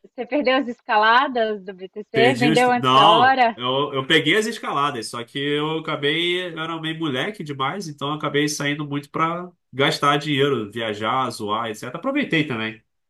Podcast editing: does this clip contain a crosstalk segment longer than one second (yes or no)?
yes